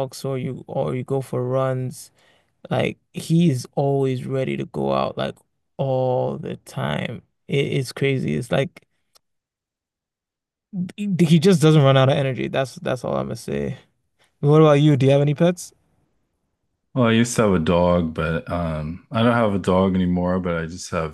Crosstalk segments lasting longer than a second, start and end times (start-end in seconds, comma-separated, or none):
none